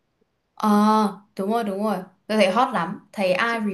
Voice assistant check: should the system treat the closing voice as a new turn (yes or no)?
yes